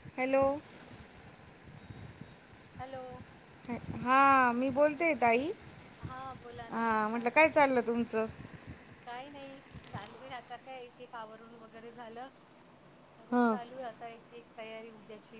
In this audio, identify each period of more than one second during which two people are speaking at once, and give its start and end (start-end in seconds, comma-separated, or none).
none